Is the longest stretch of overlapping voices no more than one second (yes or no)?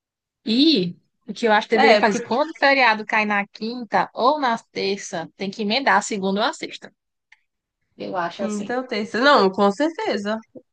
yes